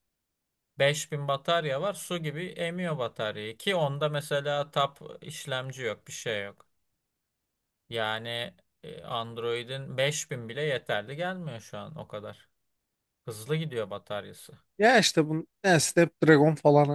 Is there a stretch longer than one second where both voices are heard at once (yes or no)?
no